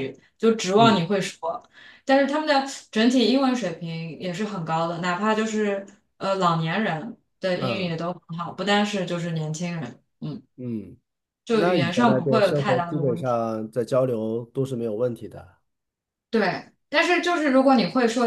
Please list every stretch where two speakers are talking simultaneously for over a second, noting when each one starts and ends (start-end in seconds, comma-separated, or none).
11.5-13.4